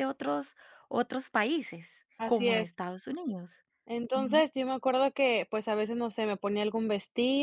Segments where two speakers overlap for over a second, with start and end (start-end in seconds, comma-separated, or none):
none